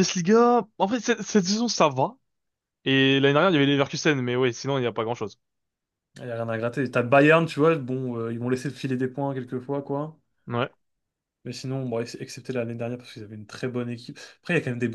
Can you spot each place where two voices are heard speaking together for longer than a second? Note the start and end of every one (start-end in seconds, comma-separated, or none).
none